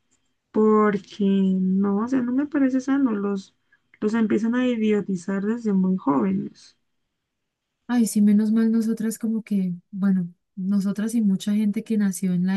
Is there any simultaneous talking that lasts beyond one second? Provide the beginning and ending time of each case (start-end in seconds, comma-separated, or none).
none